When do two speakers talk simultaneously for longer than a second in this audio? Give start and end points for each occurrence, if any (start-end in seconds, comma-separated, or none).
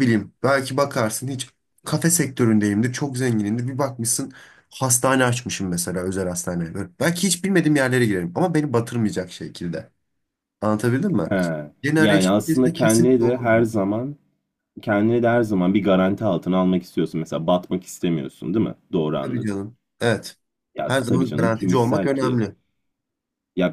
12.0-13.7, 20.9-22.4